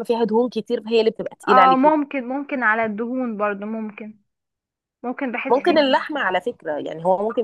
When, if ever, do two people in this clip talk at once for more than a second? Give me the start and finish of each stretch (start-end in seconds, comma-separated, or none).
none